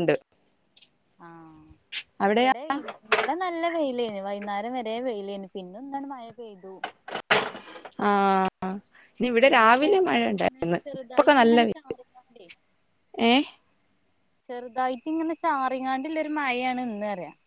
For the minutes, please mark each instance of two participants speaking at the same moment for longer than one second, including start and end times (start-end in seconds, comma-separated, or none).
9.5-12.0